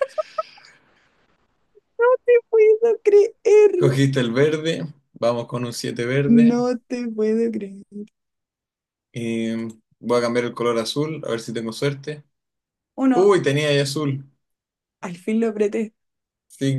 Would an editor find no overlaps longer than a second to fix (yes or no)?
yes